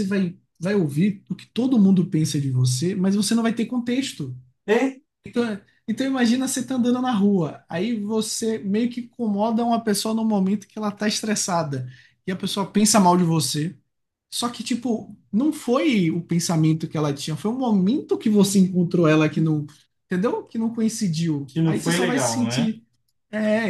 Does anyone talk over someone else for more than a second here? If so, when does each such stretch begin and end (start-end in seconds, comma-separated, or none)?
21.5-22.7